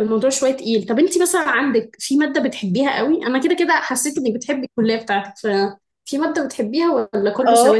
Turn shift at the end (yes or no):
yes